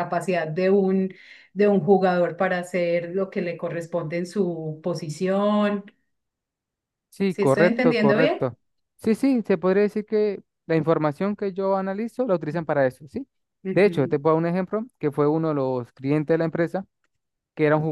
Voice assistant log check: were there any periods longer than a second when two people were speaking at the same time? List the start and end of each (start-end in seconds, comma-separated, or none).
7.3-8.5